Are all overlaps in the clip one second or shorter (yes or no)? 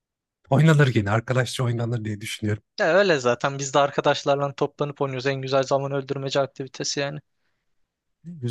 yes